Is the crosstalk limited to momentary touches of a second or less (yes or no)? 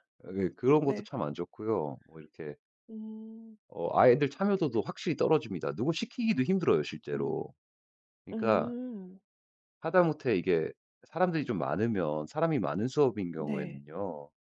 yes